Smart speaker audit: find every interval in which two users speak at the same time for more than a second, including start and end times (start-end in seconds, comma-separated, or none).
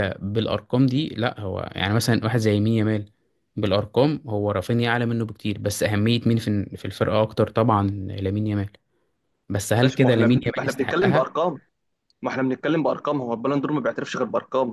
9.8-11.3